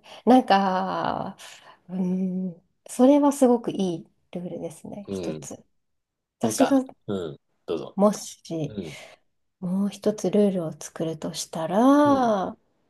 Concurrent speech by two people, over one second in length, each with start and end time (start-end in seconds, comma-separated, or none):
none